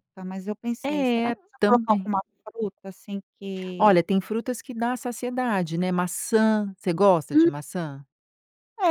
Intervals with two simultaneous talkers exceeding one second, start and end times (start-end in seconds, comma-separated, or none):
0.8-2.1